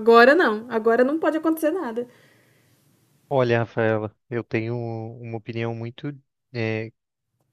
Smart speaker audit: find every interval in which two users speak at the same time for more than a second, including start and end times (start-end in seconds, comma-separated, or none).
none